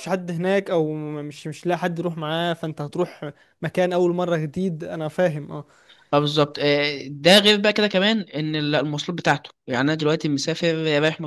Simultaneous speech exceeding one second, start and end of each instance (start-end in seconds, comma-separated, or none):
none